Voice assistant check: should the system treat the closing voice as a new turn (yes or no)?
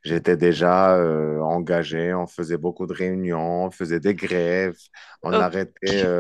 no